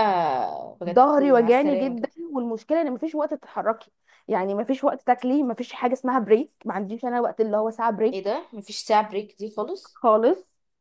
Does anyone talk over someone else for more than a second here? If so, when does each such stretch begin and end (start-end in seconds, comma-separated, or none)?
0.9-2.1